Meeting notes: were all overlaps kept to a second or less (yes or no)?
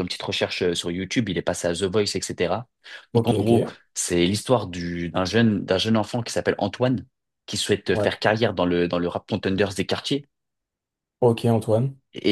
yes